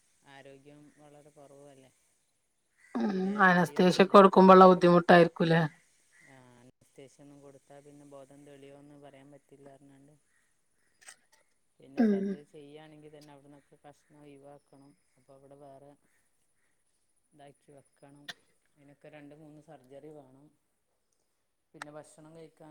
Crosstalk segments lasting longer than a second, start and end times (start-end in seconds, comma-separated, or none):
none